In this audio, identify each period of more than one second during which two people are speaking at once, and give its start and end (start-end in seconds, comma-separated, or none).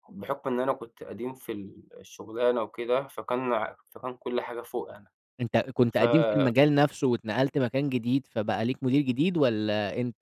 none